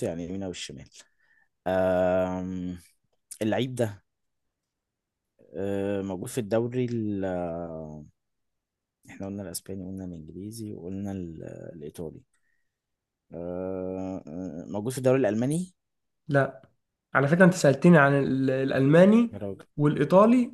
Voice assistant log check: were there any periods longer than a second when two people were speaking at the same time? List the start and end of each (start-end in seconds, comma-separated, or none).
none